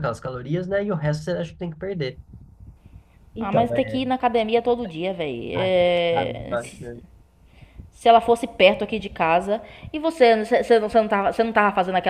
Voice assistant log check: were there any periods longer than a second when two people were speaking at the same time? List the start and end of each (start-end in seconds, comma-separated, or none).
5.5-6.8